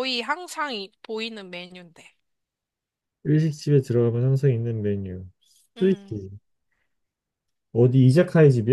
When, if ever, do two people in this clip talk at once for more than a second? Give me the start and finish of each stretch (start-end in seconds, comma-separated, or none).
none